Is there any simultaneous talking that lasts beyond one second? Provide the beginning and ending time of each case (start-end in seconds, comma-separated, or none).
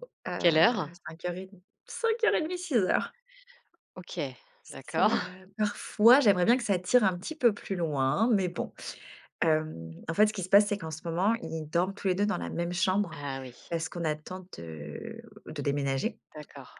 none